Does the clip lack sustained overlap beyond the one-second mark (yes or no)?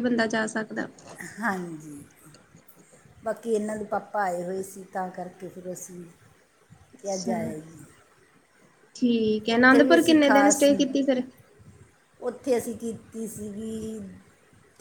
yes